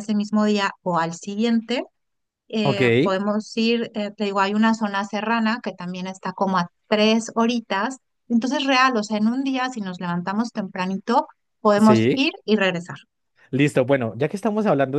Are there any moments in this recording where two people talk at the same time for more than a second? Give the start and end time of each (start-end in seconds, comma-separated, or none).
none